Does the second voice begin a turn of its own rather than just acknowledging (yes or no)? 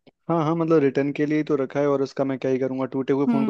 yes